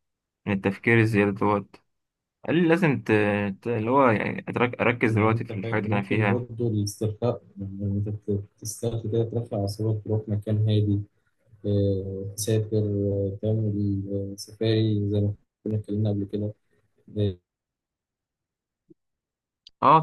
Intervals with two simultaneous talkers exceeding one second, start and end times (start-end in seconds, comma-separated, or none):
5.1-6.5